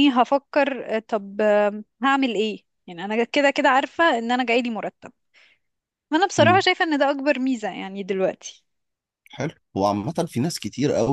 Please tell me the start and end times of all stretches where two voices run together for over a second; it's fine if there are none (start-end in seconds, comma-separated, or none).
none